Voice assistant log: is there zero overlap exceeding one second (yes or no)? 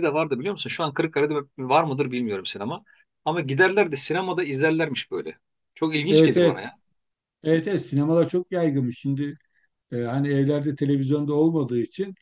yes